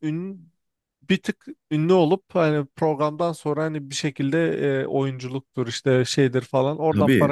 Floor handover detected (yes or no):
yes